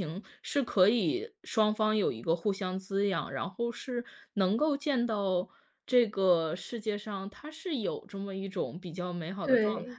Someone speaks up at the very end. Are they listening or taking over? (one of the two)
taking over